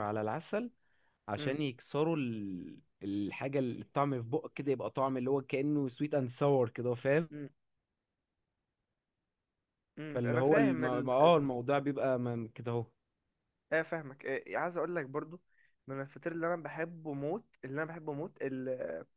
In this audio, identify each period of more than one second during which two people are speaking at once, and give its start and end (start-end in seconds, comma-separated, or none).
10.1-11.4